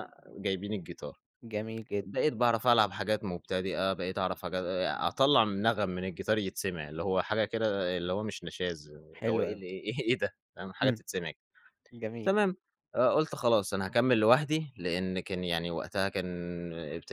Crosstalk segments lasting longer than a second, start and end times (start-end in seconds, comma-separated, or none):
none